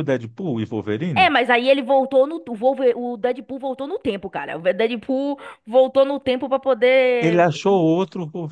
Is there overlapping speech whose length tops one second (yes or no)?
no